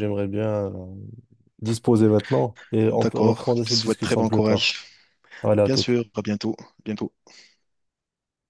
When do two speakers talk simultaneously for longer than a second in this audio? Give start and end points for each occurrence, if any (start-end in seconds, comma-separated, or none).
2.9-4.7